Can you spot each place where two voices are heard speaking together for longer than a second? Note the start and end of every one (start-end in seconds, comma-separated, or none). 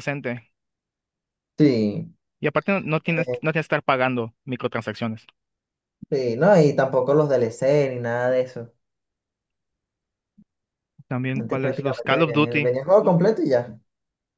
11.3-12.7